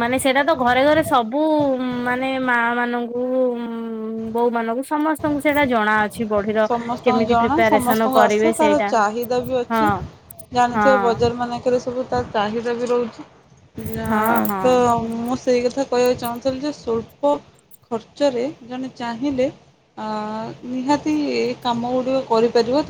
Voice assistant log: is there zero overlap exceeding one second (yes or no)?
no